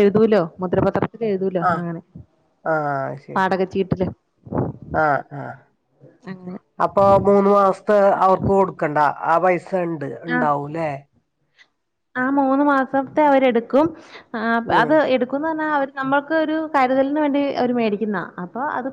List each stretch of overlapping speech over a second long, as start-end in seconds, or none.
none